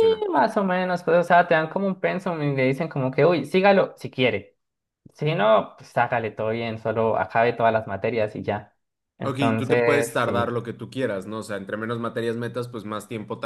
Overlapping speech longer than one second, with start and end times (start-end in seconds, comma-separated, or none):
9.2-10.6